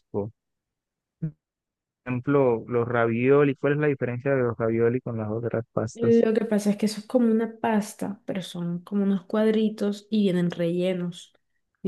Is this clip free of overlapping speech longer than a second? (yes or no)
yes